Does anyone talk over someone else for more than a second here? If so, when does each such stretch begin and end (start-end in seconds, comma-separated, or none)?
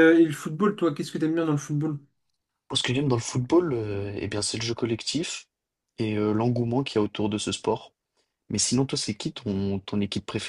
none